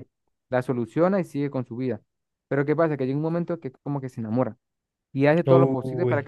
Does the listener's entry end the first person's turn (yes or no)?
no